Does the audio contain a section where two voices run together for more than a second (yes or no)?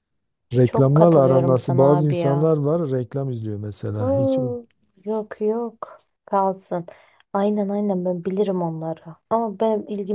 yes